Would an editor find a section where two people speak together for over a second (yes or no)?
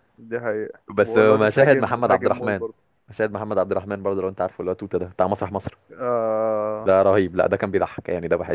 yes